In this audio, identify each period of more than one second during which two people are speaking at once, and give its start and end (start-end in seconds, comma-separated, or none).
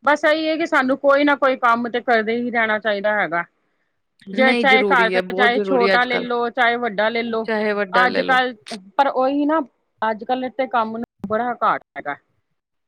4.4-6.4